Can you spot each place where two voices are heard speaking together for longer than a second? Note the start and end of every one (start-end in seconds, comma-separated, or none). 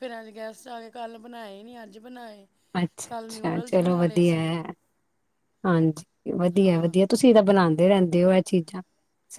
3.1-4.5